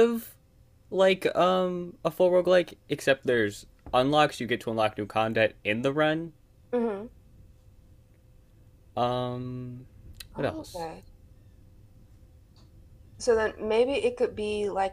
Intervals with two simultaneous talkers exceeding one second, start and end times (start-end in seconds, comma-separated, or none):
none